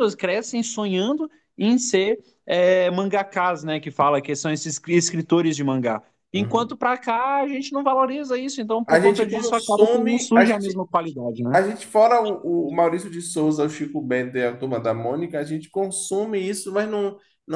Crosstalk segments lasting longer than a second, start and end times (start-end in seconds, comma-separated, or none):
8.9-10.8